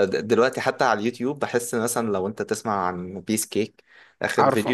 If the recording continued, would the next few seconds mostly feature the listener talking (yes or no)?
no